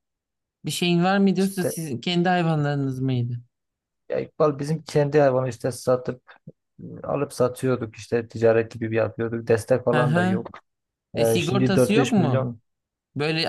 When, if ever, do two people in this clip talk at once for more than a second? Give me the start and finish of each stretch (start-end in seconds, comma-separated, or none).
11.2-12.5